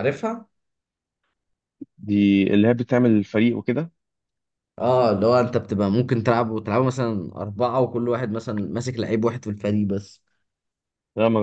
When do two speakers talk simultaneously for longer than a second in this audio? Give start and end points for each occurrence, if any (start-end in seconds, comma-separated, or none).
none